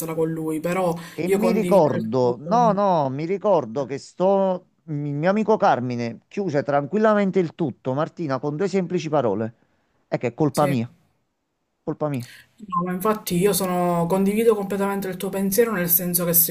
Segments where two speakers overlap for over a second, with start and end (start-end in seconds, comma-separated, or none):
1.2-2.8